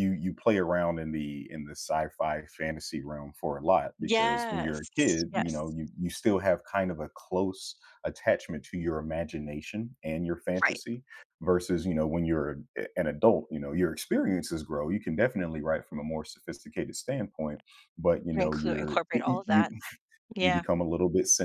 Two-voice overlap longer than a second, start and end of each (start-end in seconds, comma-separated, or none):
4.0-5.8, 18.4-19.6